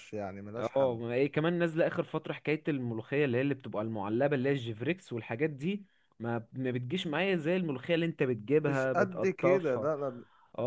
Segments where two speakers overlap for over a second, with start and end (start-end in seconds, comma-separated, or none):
8.6-9.9